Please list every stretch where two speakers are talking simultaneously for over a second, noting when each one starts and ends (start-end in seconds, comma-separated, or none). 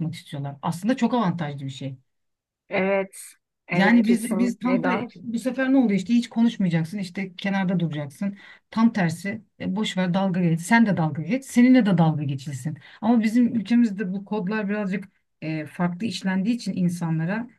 3.7-5.1